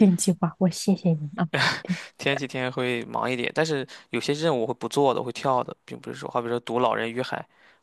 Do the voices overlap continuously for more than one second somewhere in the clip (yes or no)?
no